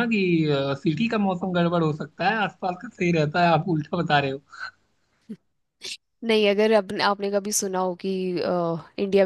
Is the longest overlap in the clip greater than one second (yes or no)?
no